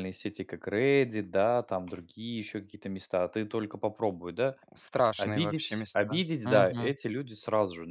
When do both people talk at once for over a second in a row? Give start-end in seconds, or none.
5.2-7.0